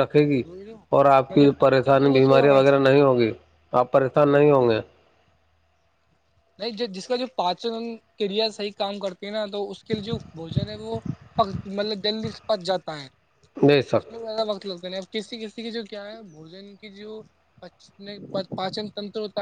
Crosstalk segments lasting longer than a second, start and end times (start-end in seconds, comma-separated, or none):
1.3-3.0